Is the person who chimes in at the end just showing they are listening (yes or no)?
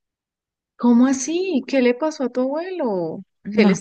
yes